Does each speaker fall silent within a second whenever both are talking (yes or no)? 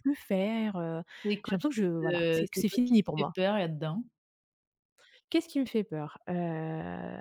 no